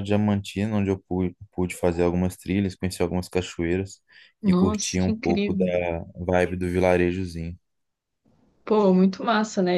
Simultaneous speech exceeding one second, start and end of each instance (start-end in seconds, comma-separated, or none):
4.5-5.7